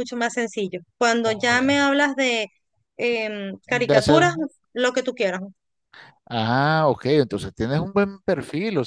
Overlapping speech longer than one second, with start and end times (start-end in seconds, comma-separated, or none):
none